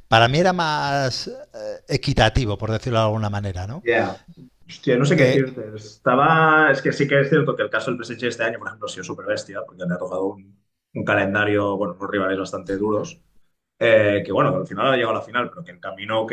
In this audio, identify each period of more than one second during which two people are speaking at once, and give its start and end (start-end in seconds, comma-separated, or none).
none